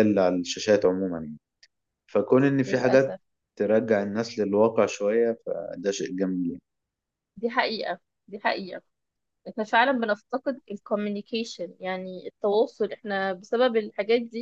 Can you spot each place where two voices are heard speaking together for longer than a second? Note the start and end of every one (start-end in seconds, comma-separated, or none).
none